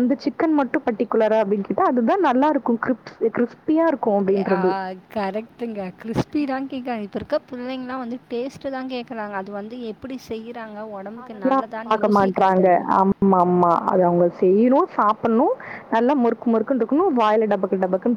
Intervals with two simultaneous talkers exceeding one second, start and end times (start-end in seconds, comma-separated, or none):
11.2-12.7